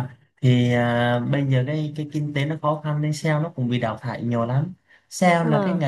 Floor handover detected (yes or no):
no